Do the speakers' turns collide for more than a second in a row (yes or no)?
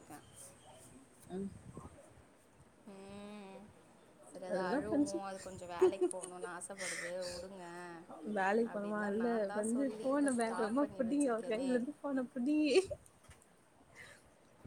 yes